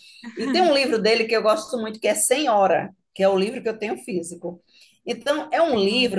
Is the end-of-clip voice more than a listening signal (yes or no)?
no